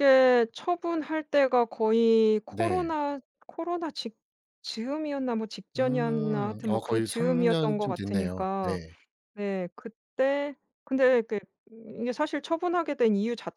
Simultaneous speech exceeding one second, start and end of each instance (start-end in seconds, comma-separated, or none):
5.8-8.7